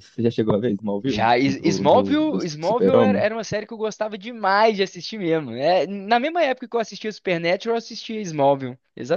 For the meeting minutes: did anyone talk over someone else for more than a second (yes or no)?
yes